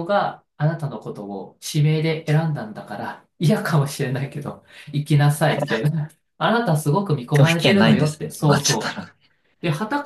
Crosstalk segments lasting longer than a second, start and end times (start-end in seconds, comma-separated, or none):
7.3-9.0